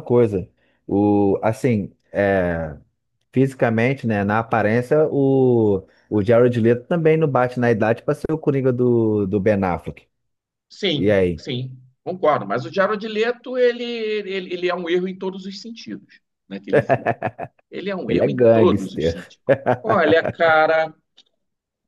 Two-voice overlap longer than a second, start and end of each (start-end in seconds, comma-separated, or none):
18.1-19.3